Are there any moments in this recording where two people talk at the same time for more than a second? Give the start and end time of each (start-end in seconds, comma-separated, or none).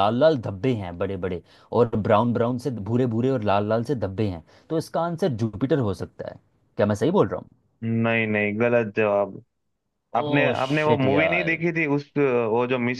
10.2-11.6